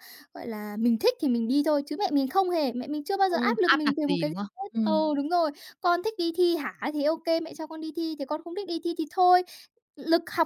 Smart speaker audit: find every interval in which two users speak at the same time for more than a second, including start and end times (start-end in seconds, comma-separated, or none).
3.3-5.1